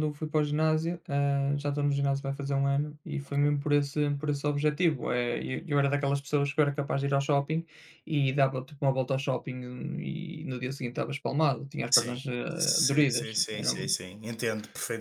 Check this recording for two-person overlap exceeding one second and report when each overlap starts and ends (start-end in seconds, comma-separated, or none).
11.9-13.7